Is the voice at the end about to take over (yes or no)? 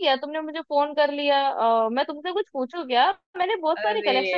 yes